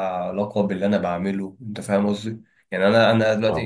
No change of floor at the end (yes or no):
yes